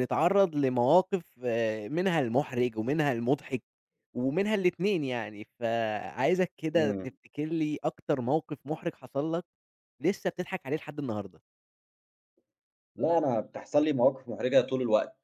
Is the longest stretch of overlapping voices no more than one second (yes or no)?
yes